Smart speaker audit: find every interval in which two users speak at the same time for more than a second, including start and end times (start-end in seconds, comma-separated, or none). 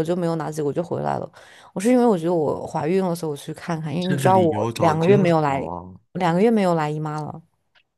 4.0-5.7